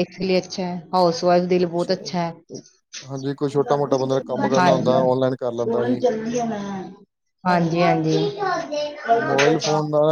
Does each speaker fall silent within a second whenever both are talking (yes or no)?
no